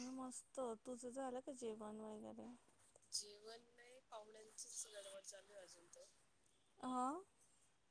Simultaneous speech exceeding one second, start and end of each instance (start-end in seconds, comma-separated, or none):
none